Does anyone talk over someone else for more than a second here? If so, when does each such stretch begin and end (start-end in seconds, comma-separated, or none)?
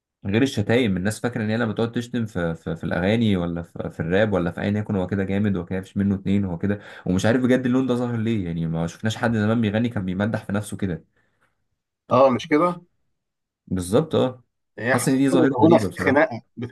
14.9-16.2